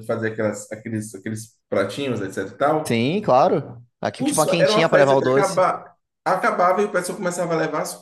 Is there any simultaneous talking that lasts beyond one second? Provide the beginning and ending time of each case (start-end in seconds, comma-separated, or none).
4.2-5.7